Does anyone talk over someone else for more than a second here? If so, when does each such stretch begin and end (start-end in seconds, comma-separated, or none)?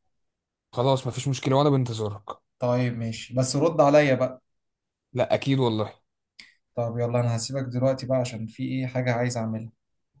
none